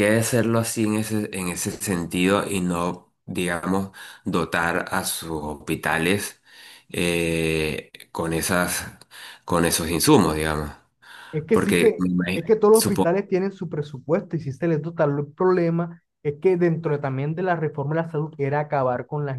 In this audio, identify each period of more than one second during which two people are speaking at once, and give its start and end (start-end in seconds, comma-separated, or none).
11.5-13.1